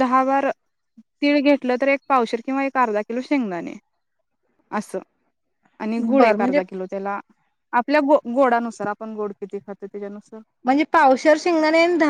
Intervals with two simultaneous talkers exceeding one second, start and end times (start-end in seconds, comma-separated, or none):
none